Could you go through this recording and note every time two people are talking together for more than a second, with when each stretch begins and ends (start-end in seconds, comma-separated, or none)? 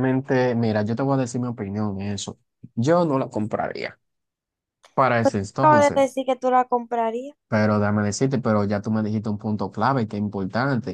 none